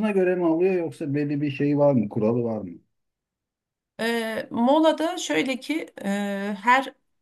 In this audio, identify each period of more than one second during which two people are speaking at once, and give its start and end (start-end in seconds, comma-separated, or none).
none